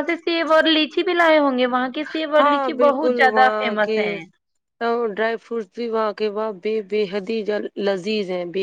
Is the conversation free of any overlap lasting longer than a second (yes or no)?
no